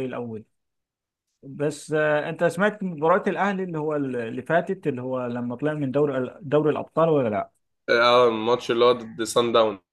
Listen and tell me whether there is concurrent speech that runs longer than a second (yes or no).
no